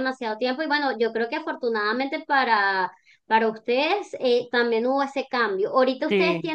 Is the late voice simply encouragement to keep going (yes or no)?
yes